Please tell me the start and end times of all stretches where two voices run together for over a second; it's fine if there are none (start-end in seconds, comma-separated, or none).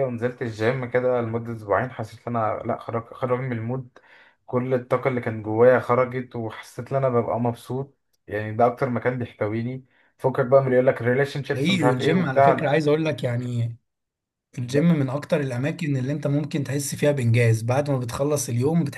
11.5-12.7